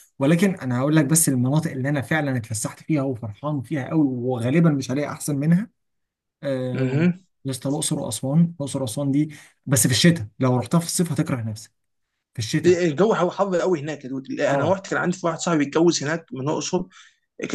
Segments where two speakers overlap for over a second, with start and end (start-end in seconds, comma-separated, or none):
none